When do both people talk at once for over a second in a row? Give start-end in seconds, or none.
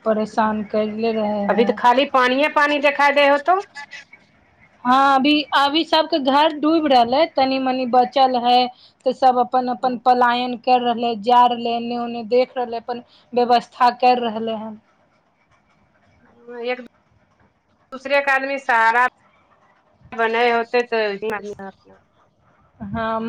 none